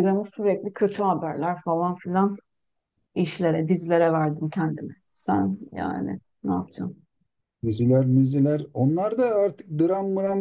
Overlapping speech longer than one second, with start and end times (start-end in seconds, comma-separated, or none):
none